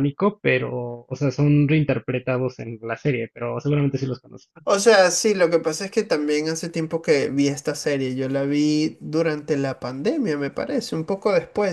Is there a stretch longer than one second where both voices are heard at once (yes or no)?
no